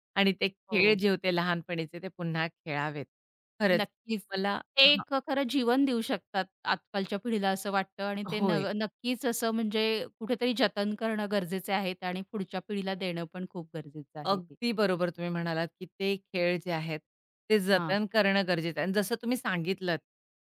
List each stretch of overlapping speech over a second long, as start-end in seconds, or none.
none